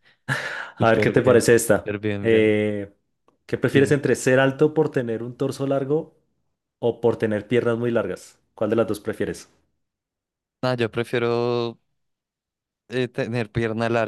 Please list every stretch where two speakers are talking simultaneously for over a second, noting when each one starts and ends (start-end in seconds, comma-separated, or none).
0.8-2.5